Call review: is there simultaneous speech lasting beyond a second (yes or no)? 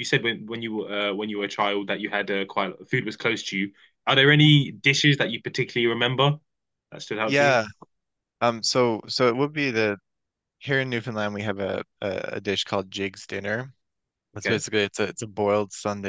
no